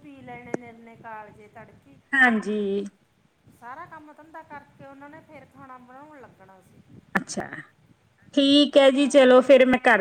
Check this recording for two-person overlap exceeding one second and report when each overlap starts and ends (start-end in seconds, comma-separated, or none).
none